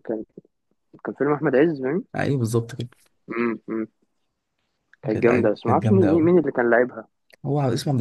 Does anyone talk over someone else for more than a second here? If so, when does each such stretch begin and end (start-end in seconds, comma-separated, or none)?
5.1-6.3